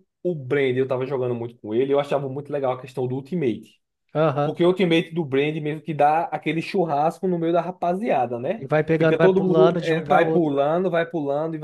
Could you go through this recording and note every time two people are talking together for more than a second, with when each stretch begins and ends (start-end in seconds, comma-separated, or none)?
8.6-10.6